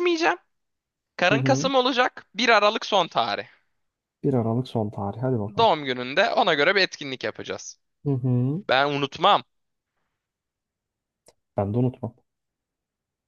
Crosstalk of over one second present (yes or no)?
no